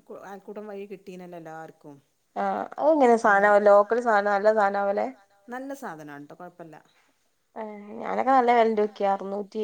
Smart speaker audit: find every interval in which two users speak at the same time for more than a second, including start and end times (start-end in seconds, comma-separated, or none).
none